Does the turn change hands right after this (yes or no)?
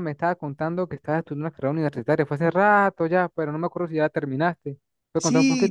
yes